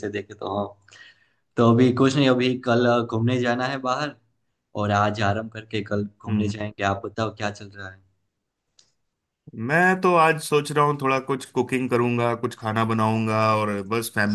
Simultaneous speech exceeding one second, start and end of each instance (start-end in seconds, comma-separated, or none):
none